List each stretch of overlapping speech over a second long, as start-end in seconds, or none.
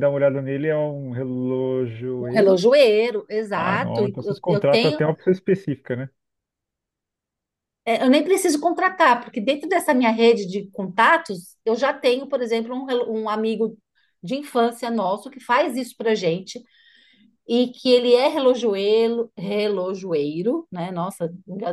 3.5-5.0